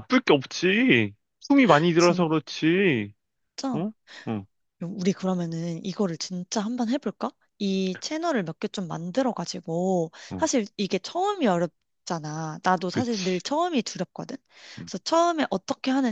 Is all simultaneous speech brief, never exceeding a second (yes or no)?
yes